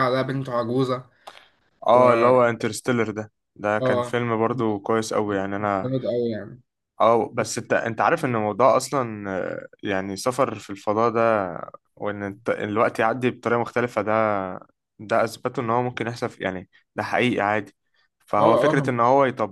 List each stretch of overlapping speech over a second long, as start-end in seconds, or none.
none